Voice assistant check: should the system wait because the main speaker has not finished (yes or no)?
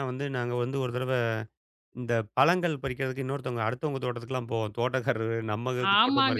no